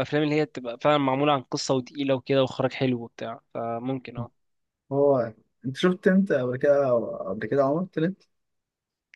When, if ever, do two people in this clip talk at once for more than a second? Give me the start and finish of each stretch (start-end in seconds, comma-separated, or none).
none